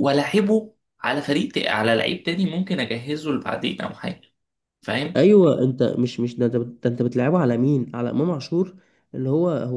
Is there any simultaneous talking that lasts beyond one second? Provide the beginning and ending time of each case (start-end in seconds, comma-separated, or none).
none